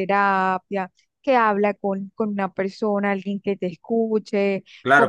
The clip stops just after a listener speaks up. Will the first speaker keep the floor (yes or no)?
no